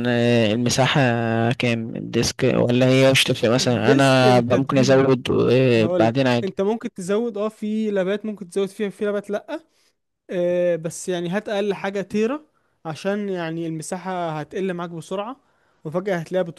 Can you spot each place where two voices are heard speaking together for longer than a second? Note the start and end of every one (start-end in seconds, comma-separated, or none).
3.6-5.1